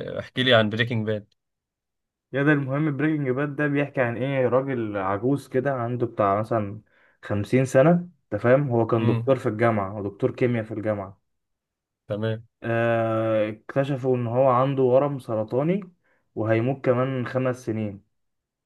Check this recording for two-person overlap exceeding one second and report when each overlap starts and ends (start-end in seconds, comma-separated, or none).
none